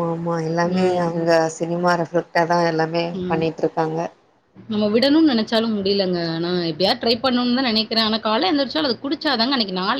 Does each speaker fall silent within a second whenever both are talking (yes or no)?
yes